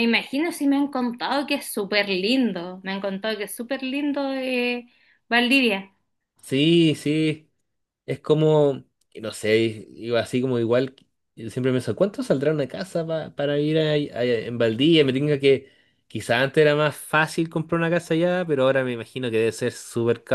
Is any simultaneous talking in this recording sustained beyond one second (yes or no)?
no